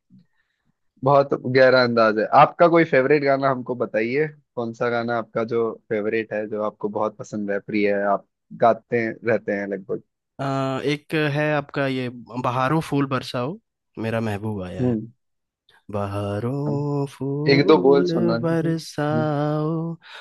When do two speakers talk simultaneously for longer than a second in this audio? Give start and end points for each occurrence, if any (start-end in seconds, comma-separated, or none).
17.5-19.3